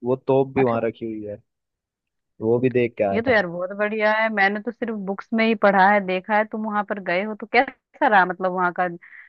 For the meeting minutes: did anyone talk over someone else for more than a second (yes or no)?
no